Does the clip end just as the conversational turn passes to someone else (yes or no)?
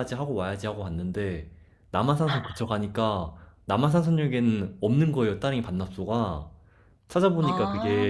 no